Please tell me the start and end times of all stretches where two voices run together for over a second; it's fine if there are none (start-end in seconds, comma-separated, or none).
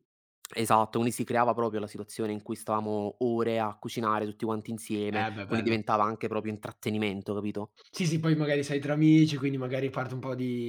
none